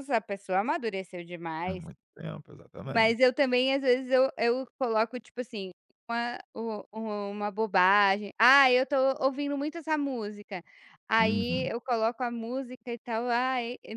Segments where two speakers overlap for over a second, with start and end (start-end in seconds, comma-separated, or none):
none